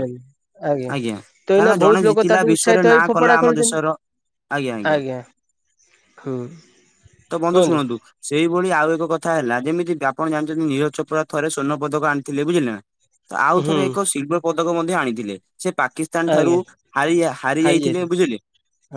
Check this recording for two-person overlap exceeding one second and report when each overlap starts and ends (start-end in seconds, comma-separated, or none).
1.6-3.8